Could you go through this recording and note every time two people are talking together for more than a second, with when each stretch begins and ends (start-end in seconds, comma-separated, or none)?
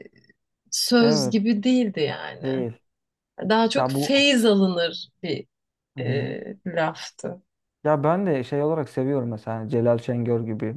none